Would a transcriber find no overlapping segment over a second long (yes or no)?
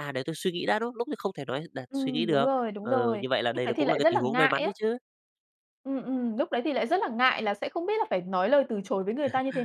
no